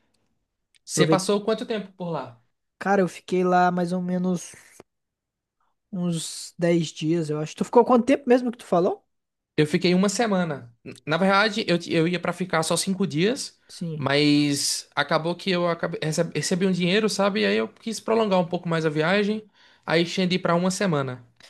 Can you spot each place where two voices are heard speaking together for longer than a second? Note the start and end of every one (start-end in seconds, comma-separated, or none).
none